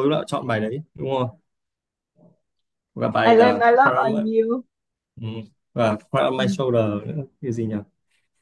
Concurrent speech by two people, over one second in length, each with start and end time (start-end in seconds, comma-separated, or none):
none